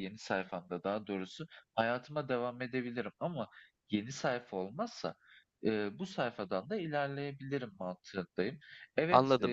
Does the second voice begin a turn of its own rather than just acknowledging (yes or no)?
yes